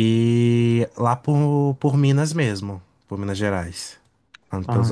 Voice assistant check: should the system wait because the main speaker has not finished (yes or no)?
no